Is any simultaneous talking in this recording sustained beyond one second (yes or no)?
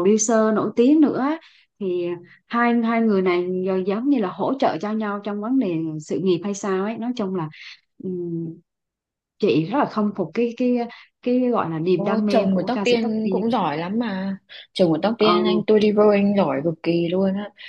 yes